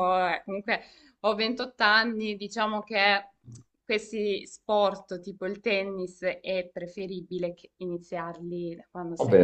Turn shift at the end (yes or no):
yes